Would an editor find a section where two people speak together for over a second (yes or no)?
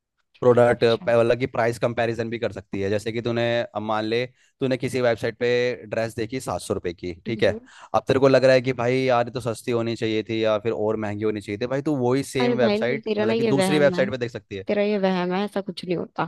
yes